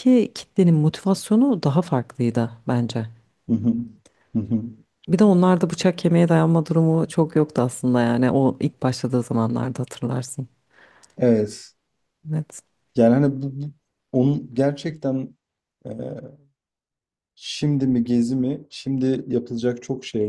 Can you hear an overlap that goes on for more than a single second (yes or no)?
no